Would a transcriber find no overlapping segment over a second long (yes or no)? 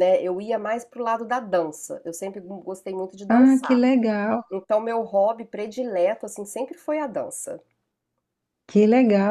yes